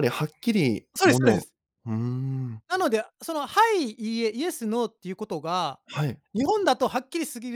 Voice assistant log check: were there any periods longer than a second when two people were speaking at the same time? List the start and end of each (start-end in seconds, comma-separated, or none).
none